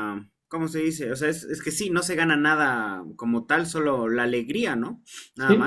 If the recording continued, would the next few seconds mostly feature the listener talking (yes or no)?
yes